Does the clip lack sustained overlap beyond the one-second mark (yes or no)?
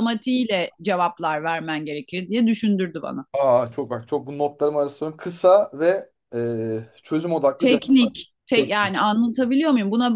yes